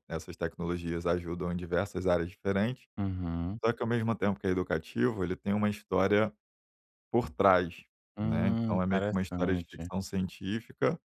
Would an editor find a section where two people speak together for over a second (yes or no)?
yes